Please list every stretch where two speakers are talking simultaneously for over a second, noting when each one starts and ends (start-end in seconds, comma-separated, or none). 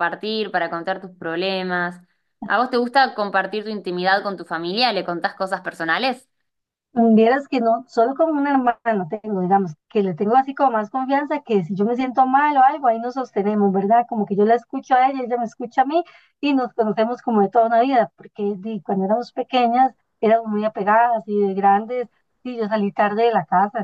none